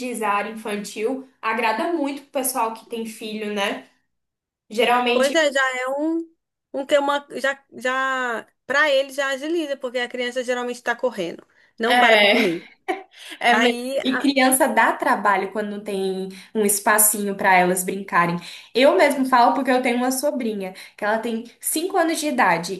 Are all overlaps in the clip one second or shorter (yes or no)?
yes